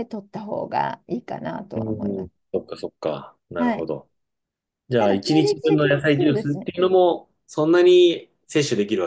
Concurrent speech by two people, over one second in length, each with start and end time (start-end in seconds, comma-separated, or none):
5.0-6.7